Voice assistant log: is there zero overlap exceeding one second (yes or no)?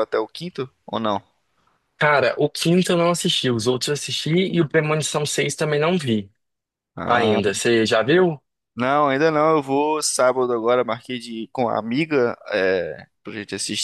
yes